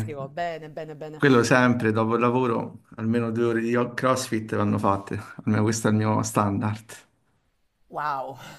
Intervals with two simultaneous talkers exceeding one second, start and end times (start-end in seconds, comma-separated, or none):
none